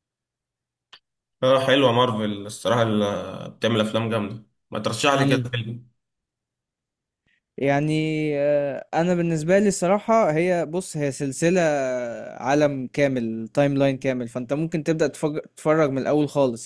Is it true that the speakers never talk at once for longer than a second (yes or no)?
yes